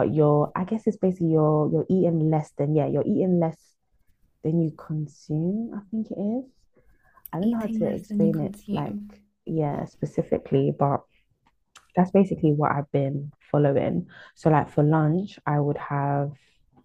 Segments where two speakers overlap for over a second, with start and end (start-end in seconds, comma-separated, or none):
7.4-9.0